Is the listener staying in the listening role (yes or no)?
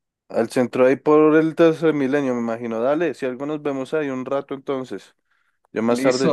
yes